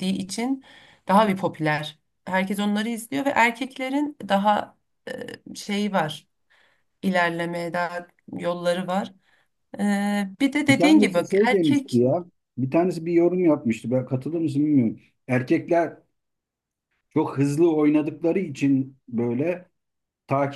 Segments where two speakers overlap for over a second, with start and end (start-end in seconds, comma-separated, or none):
10.7-12.0